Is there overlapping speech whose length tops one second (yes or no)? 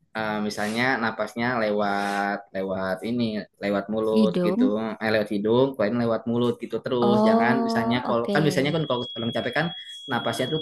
yes